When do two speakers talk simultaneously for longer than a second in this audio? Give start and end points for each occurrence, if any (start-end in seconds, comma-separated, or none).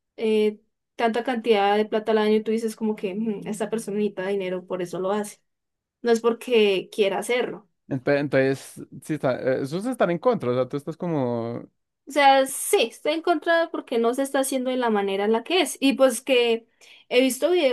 none